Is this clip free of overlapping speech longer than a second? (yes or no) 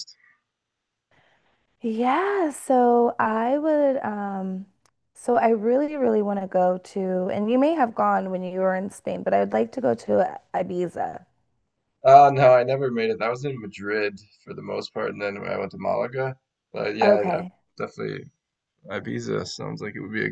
yes